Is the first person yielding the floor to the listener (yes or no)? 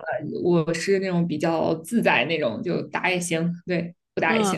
yes